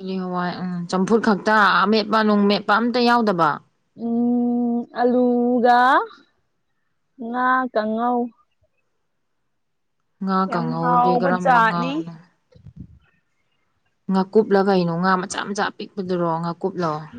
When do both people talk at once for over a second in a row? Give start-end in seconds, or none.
10.5-11.9